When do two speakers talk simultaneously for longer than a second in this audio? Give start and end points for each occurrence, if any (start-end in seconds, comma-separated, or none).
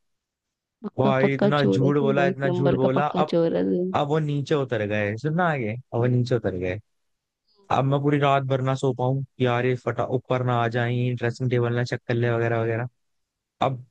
1.0-3.3